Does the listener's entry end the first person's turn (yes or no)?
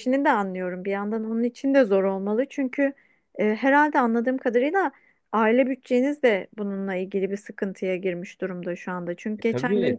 no